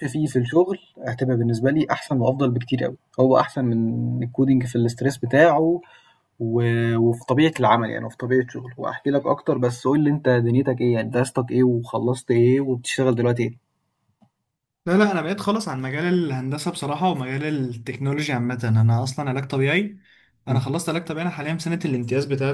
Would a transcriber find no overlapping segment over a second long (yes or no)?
yes